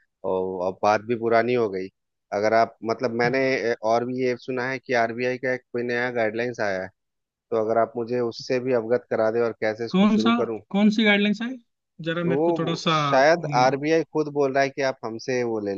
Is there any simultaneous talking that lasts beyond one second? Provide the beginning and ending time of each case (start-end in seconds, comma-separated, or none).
12.2-13.8